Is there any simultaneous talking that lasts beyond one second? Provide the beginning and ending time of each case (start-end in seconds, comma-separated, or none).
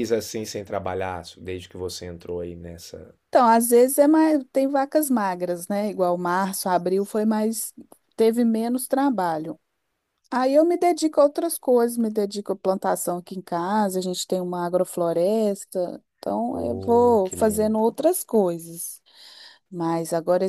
16.5-17.8